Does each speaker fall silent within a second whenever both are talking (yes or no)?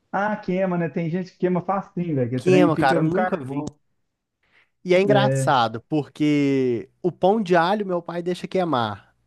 no